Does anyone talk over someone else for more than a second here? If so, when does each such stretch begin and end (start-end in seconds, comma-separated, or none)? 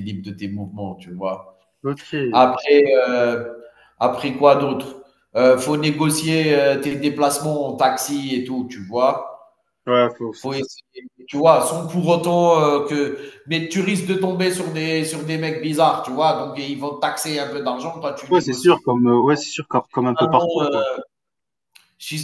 none